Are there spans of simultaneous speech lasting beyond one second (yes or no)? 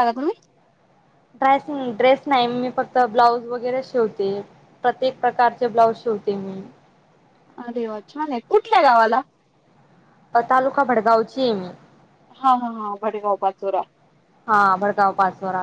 no